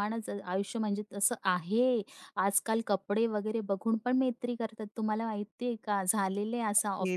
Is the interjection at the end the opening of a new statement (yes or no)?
yes